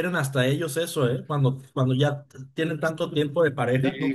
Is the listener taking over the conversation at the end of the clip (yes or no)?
yes